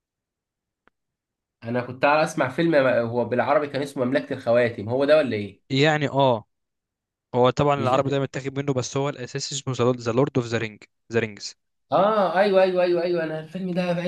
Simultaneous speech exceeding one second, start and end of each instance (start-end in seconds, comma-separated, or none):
none